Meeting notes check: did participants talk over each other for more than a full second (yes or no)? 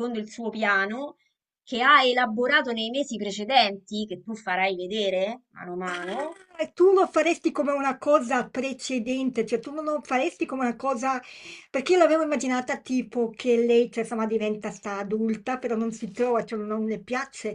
no